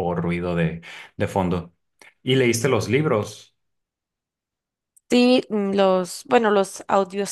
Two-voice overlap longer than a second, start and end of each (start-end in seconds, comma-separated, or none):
none